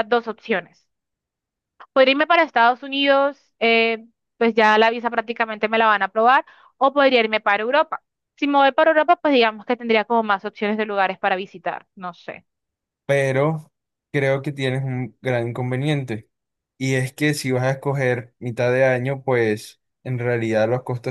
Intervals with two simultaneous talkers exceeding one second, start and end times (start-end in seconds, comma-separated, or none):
none